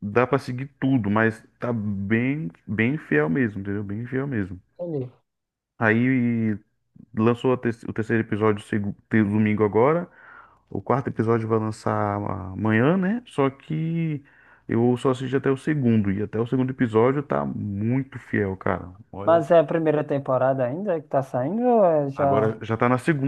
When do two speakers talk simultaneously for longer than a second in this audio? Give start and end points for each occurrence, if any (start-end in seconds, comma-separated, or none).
none